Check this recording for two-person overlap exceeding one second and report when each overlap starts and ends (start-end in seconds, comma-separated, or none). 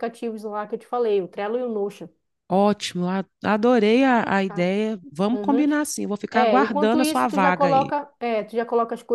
6.3-7.9